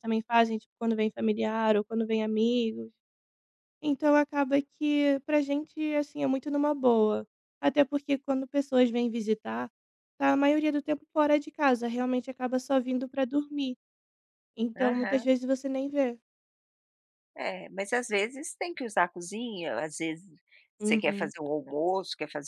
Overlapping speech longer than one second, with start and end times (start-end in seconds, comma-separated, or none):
none